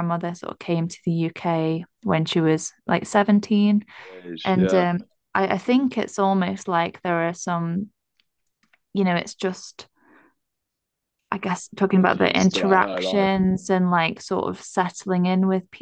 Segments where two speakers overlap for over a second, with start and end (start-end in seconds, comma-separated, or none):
11.8-13.3